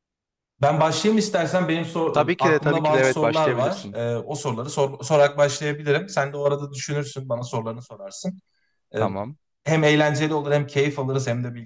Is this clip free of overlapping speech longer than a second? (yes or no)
no